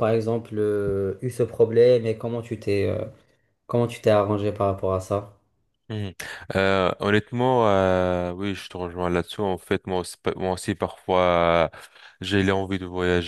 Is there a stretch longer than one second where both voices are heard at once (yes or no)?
no